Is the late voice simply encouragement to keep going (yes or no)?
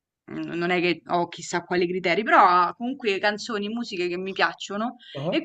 yes